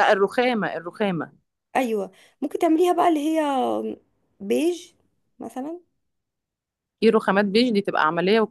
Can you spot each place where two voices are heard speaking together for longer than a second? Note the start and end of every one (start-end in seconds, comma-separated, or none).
none